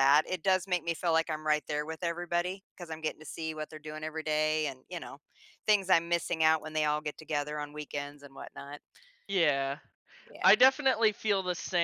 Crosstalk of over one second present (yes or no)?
no